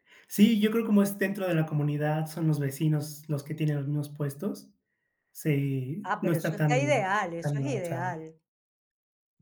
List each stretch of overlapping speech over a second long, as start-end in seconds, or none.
6.0-8.2